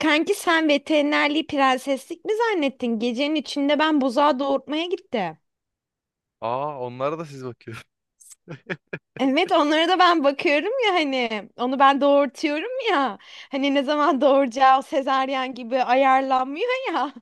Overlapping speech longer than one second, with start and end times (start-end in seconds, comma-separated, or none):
none